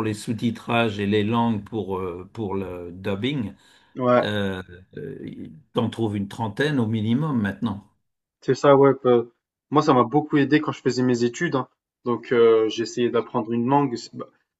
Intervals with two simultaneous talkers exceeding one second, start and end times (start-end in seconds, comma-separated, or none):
none